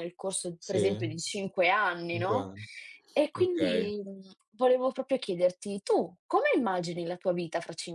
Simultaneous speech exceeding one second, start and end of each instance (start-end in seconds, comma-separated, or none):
none